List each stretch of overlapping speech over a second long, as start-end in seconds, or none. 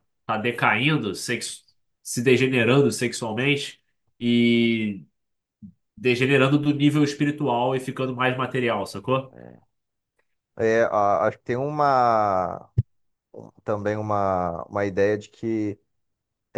none